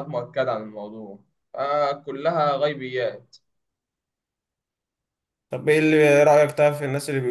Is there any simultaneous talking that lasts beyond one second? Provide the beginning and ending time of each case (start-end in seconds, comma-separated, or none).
none